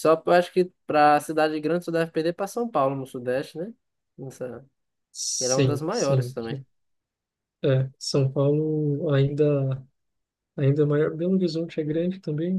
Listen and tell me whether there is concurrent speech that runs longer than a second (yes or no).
yes